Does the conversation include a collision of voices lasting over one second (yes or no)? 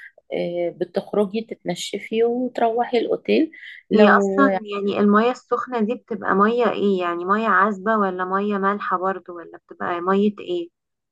no